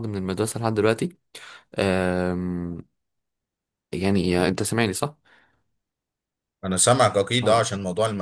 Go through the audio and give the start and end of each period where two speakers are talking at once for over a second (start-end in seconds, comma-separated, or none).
none